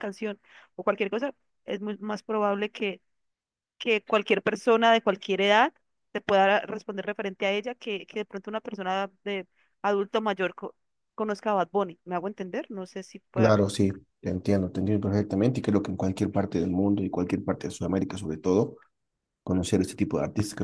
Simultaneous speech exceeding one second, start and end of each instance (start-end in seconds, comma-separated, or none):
none